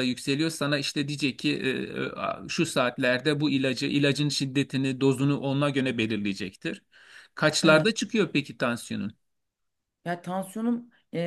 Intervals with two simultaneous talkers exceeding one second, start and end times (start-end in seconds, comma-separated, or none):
none